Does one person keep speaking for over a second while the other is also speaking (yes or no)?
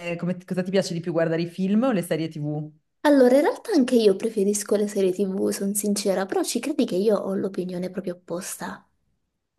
no